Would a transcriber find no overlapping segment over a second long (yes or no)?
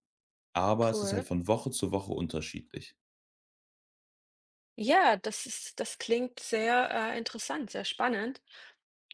yes